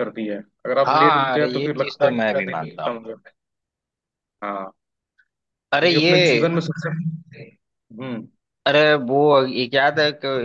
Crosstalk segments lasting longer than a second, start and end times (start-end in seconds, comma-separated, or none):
0.9-3.0